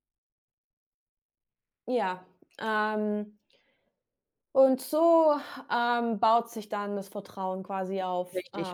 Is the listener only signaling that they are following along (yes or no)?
no